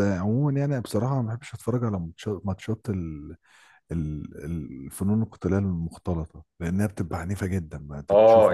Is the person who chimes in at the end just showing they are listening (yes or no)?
no